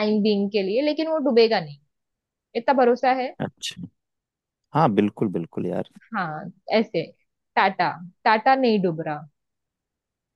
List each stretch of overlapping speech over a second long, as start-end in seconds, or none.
none